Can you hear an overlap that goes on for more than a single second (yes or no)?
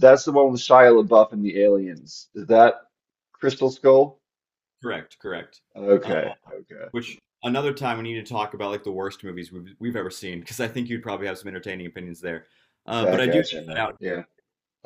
yes